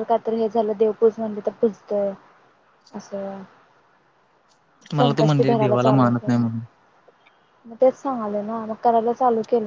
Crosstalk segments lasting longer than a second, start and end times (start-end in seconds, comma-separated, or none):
5.0-6.5